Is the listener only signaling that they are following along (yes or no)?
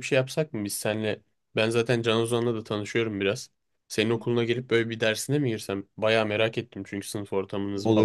no